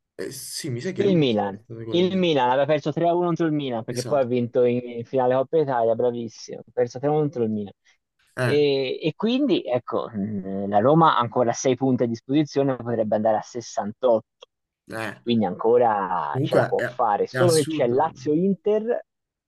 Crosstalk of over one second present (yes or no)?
yes